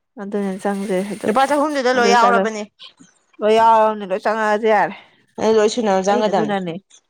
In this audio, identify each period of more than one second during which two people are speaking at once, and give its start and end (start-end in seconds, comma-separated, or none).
none